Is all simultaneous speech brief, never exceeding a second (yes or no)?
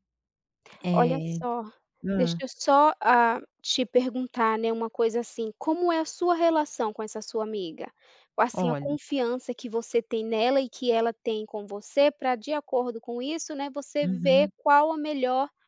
yes